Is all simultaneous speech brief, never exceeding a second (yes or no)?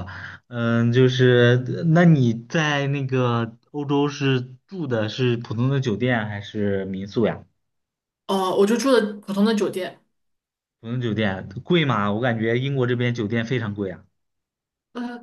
yes